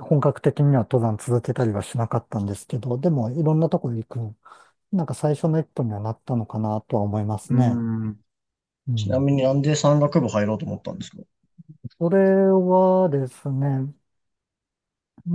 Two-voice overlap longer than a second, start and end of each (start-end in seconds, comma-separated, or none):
none